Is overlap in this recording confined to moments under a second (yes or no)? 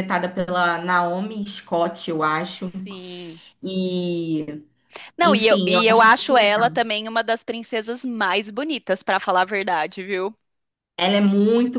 no